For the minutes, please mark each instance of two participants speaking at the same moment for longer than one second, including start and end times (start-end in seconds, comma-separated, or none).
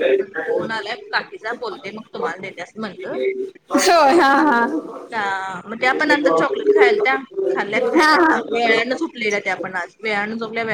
none